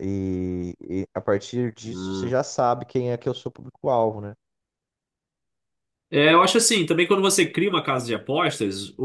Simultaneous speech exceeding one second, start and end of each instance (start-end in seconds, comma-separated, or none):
none